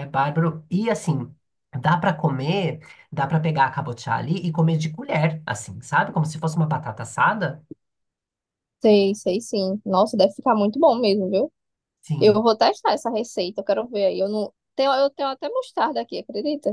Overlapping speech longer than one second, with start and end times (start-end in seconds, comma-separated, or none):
none